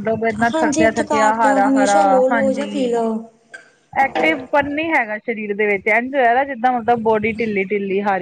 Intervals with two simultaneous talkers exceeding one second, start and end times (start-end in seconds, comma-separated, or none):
0.5-2.9